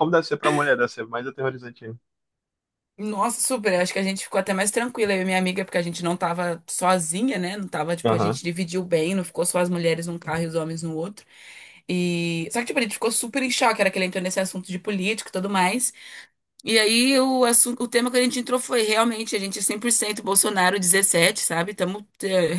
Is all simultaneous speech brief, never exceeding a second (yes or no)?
yes